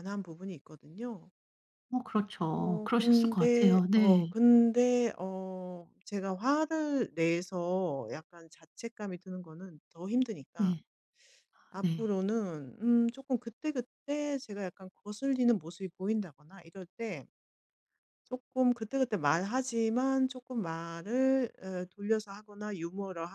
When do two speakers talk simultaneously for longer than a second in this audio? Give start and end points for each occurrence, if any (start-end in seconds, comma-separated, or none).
2.5-4.3